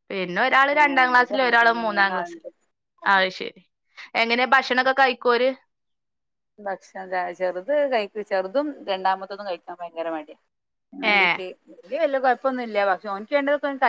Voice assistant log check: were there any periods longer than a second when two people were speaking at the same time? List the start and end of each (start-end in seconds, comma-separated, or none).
0.8-2.4